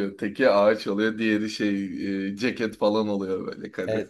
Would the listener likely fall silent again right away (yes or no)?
no